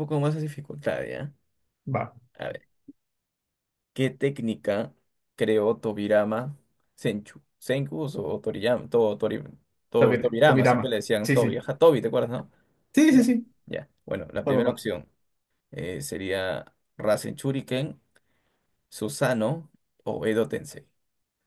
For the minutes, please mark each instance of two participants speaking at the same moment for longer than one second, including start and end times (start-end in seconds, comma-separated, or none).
10.0-11.6